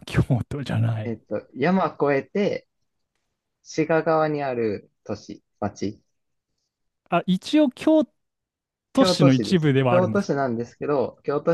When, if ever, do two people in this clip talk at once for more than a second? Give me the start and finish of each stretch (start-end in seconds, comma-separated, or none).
8.9-10.4